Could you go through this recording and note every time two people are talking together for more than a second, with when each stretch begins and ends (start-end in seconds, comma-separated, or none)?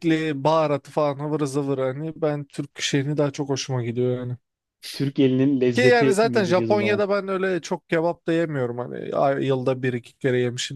5.8-7.0